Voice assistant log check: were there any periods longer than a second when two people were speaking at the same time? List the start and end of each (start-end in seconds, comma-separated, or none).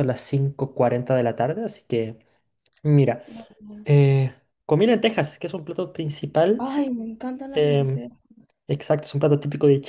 none